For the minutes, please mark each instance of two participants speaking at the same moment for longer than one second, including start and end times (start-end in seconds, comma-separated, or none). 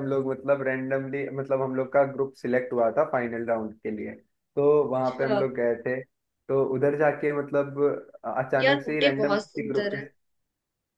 8.6-10.0